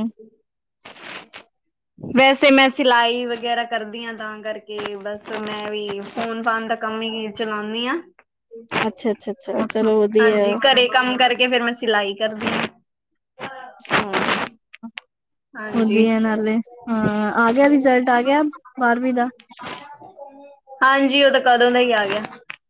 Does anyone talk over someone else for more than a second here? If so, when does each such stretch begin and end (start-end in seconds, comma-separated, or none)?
none